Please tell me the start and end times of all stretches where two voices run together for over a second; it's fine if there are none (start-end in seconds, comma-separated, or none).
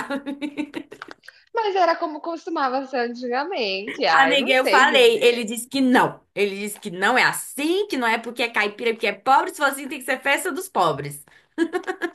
4.1-5.5